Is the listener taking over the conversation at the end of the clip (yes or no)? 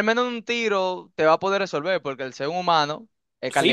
yes